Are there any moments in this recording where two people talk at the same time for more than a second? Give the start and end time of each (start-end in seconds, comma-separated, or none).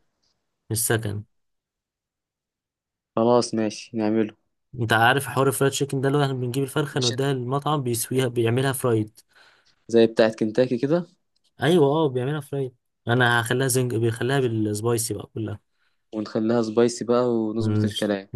none